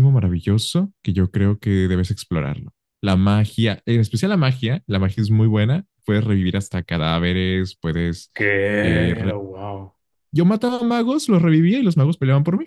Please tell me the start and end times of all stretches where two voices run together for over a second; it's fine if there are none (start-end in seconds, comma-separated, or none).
none